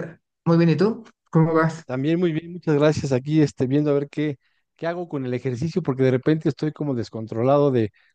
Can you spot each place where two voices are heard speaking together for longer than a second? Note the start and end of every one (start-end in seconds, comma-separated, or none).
none